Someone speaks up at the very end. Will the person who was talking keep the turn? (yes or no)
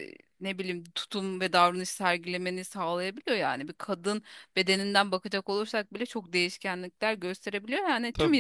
yes